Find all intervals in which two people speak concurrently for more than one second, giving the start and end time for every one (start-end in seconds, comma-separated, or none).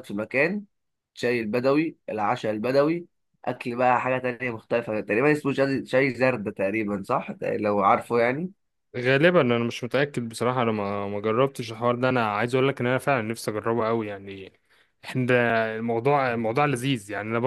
none